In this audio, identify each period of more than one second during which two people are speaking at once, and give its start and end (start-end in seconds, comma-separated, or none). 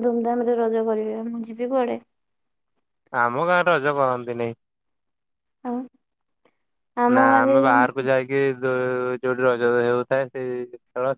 none